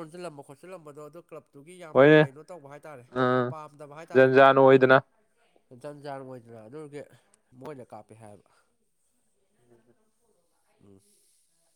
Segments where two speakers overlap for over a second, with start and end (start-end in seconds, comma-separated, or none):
none